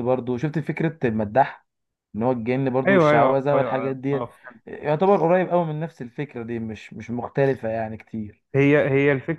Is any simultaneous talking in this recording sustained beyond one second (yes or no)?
yes